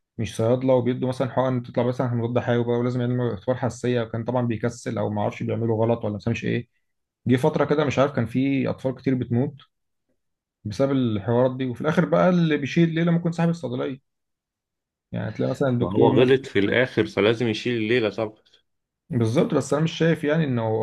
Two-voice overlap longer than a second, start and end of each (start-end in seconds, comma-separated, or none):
none